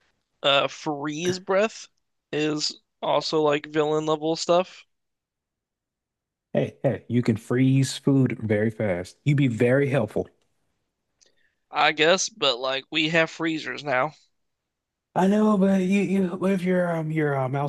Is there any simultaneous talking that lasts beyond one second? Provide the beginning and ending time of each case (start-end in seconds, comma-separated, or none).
none